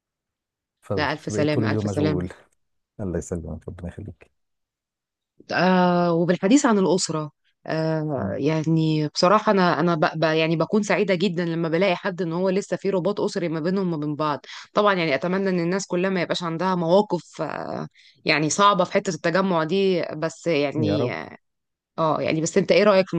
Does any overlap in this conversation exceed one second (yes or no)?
yes